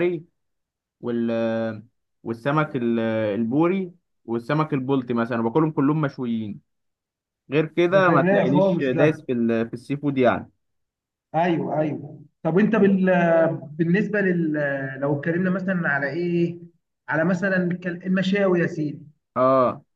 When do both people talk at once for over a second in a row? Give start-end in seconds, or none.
7.9-9.2